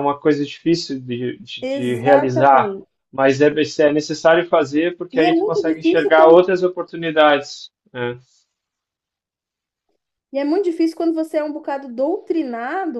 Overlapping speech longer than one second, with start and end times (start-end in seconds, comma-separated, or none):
1.6-2.9, 5.1-6.5